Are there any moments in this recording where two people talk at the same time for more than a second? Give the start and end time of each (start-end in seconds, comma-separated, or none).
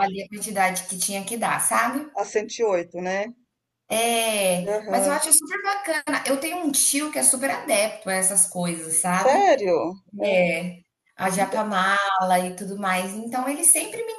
none